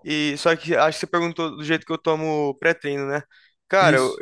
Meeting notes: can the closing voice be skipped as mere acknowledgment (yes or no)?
yes